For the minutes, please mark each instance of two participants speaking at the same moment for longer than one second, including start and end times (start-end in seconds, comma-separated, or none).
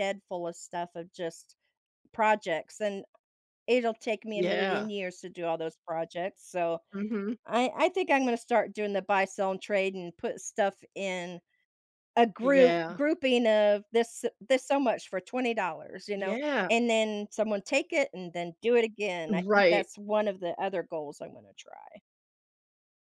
none